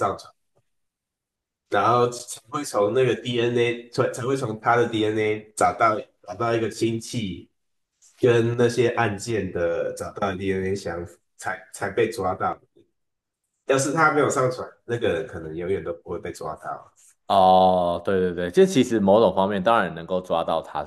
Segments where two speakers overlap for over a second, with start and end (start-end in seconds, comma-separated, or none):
none